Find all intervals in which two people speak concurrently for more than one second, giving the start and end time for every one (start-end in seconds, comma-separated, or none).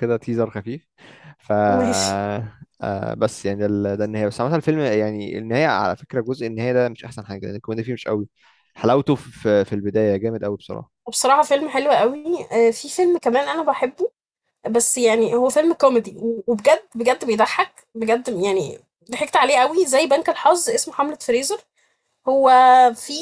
none